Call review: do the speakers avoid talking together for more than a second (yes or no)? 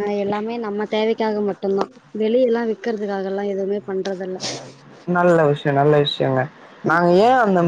yes